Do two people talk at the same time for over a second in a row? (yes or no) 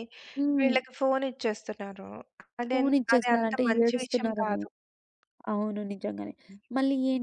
yes